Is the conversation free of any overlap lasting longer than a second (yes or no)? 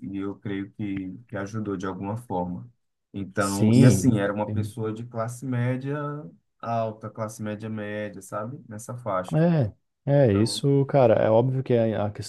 no